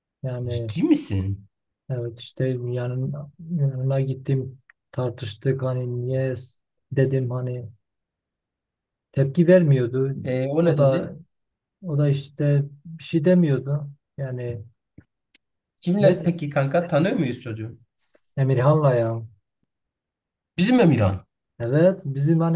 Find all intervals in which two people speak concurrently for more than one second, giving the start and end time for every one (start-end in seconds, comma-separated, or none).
none